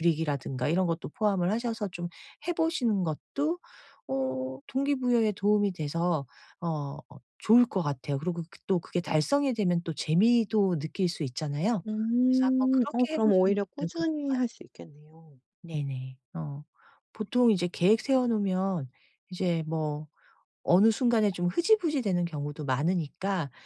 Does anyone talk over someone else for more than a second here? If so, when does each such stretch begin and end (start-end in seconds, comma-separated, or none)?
12.3-14.3